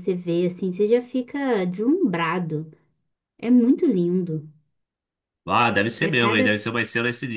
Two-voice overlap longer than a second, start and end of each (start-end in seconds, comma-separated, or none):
none